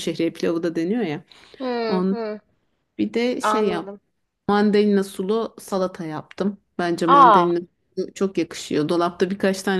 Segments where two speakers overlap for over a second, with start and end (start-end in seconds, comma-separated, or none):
none